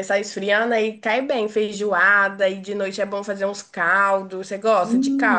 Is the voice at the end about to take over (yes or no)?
yes